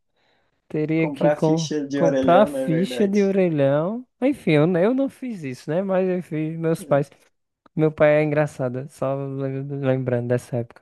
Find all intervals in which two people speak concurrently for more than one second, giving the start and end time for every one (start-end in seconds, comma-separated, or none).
1.0-3.3